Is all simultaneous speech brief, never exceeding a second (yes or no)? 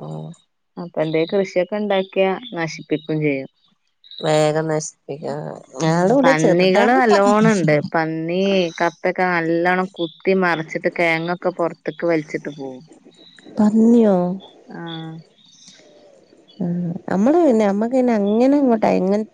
yes